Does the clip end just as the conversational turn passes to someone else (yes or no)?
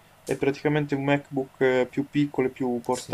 yes